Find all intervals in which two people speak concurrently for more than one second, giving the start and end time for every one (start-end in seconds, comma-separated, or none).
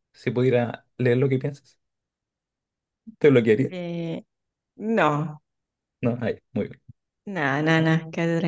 none